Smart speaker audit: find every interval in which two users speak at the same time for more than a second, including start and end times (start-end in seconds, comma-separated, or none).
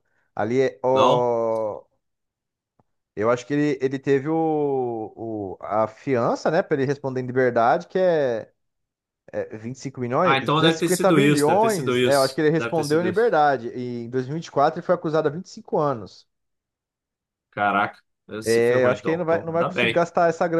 10.2-13.4, 18.4-20.1